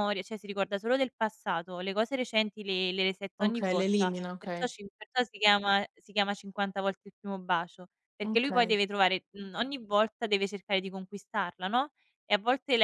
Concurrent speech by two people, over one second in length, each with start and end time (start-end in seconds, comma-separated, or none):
3.4-4.7